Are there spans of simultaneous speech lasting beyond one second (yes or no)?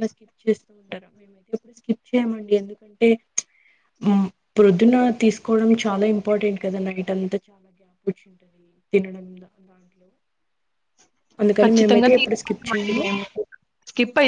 yes